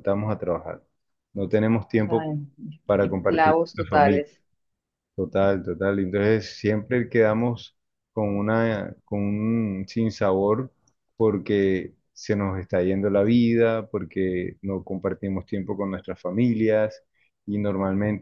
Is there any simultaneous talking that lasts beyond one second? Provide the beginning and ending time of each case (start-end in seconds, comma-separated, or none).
3.0-4.2